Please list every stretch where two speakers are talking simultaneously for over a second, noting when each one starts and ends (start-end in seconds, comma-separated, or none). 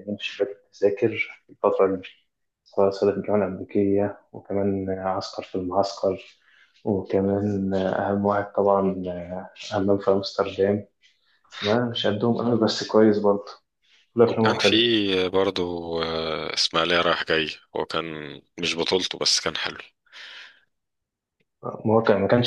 none